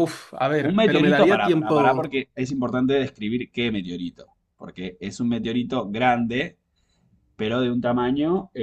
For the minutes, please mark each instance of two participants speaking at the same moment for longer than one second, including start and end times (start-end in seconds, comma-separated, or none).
0.7-2.2